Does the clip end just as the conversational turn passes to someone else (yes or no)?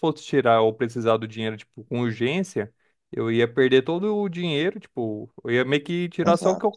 no